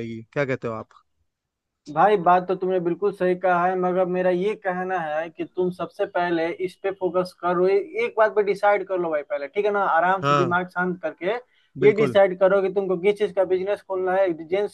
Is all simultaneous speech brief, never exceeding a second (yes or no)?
yes